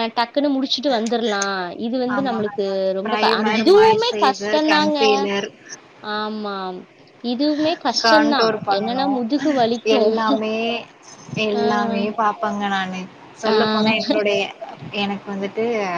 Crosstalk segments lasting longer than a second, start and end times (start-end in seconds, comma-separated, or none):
3.0-5.0